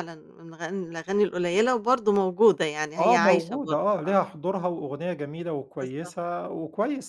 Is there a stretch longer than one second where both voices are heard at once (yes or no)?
yes